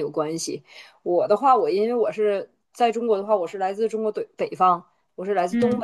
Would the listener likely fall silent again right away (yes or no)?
yes